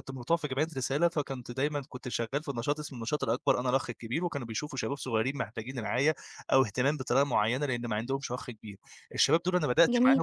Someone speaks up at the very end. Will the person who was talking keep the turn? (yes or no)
yes